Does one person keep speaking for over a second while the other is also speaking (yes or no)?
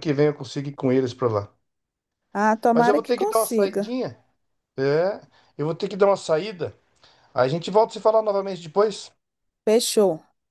yes